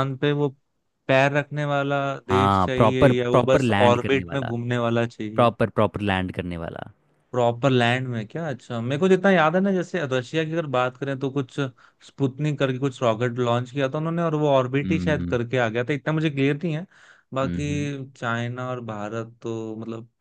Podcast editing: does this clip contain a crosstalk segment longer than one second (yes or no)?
yes